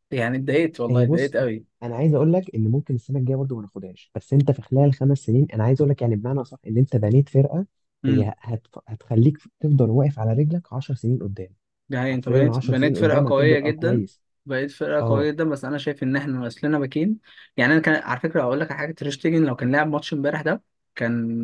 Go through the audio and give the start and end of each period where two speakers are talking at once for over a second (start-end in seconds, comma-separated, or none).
12.1-14.0